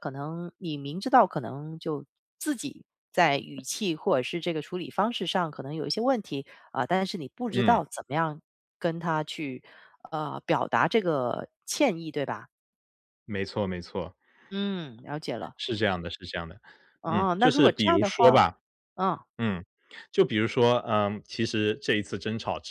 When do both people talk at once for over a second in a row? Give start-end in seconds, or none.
17.1-18.4